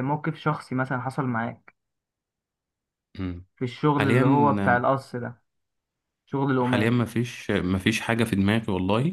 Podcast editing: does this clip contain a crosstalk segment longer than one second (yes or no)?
no